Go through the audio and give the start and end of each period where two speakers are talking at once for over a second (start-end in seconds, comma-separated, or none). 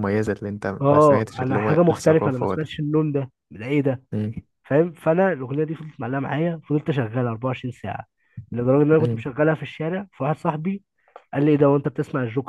0.8-2.7